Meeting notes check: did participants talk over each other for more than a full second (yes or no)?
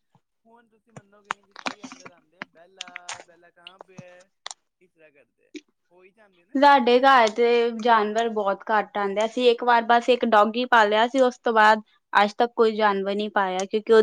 no